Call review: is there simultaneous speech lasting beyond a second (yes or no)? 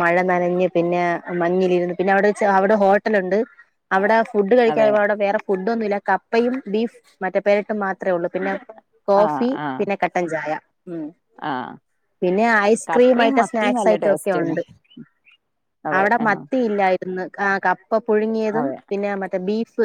yes